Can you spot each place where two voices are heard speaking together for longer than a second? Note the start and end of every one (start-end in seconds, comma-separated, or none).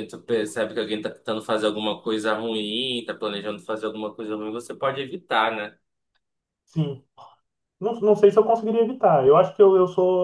none